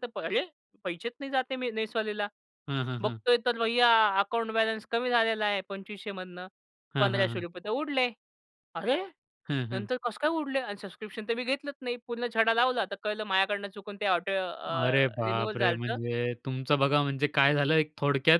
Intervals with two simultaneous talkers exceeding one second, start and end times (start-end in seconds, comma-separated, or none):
14.7-16.0